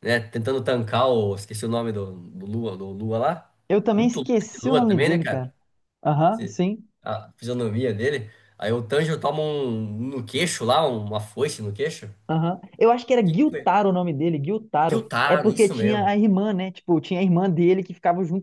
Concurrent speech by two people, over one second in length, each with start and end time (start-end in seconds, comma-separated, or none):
4.0-5.5, 14.9-16.1